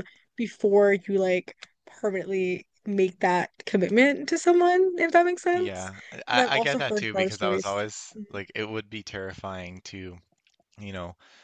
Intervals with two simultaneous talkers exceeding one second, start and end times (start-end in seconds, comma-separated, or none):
5.5-8.2